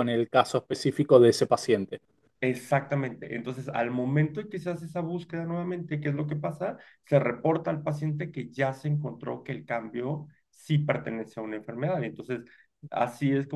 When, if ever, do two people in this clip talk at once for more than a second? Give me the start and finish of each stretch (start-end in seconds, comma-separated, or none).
none